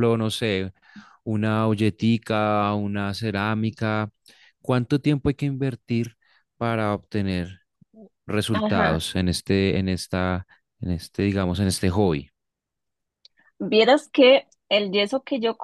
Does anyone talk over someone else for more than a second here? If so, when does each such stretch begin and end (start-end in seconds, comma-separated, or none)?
none